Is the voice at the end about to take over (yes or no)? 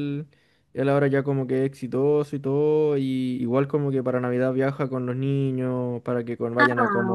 no